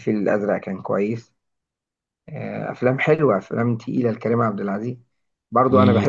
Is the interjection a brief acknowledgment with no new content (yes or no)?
yes